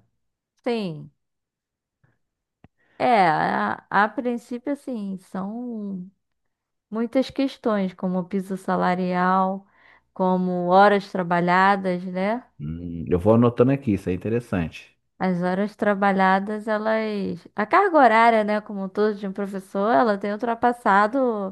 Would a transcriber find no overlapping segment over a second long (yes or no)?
yes